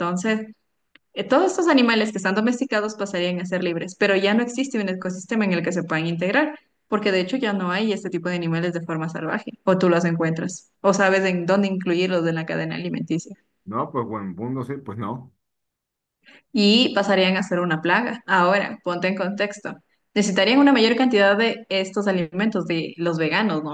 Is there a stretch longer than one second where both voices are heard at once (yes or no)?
no